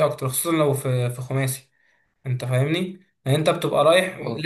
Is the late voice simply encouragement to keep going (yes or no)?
yes